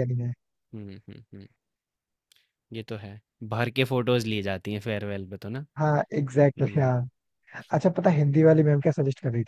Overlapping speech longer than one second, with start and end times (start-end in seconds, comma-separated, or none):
none